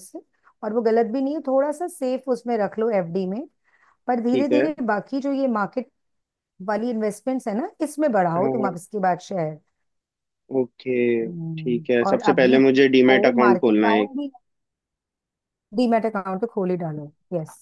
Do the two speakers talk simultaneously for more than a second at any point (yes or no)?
yes